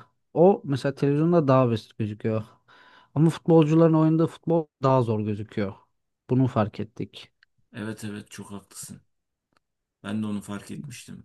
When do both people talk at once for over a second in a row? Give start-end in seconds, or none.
none